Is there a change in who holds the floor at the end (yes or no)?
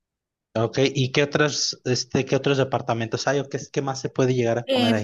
yes